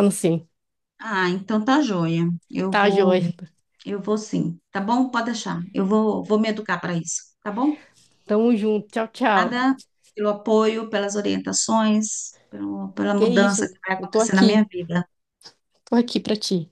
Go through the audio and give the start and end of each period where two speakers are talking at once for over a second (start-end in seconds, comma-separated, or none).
13.2-14.7